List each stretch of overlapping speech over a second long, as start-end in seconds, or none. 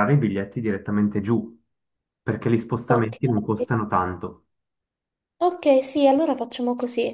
none